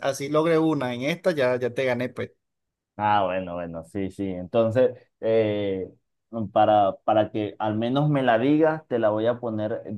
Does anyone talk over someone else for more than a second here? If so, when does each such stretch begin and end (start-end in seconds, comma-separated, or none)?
none